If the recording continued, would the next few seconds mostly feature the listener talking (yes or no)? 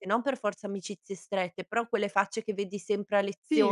yes